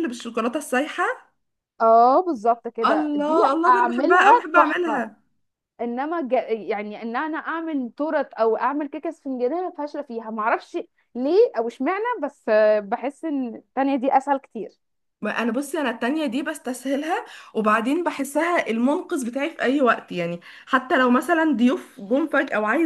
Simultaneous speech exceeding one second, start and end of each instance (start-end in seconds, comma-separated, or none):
2.9-5.0